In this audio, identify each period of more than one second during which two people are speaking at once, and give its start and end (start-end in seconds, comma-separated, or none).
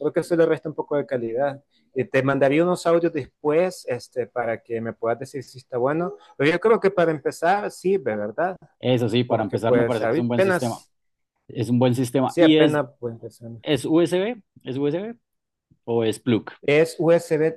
9.2-10.8